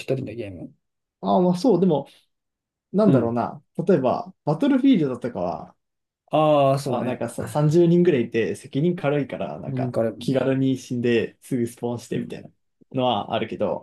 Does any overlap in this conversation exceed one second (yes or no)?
no